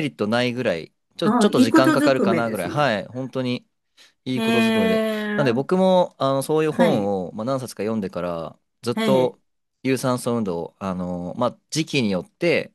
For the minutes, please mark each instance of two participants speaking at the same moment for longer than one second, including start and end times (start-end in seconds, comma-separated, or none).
1.2-2.9, 4.3-5.8